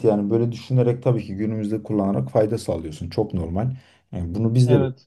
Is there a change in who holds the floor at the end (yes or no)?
no